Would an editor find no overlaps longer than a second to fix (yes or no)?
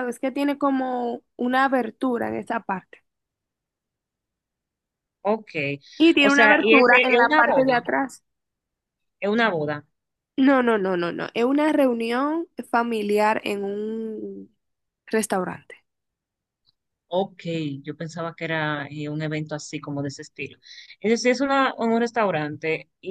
no